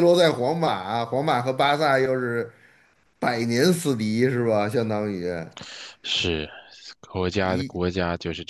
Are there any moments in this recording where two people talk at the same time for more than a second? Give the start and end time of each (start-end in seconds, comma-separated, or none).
none